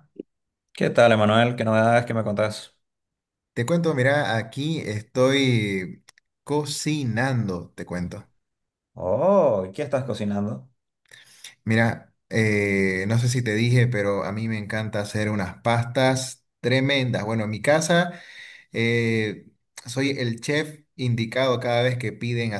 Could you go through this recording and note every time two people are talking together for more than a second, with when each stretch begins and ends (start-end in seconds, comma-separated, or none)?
none